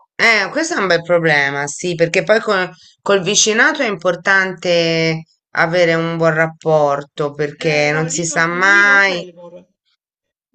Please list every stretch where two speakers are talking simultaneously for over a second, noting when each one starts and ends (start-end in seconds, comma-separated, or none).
7.6-9.3